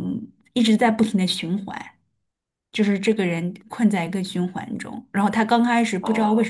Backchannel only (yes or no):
yes